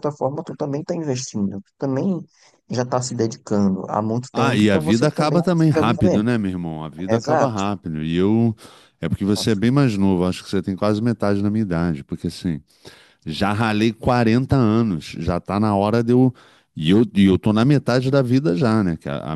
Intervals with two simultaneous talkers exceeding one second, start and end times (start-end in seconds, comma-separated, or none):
4.3-6.2